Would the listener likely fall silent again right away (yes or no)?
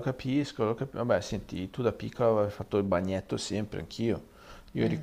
yes